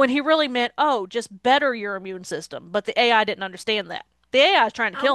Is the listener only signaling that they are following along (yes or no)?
no